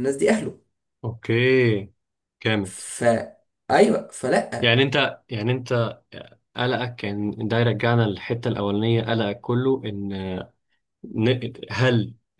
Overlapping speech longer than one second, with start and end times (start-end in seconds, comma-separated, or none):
none